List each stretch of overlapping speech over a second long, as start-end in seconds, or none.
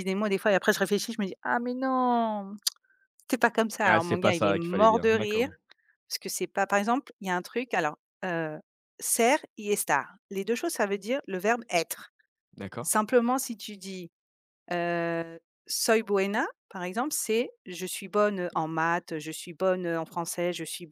3.8-5.5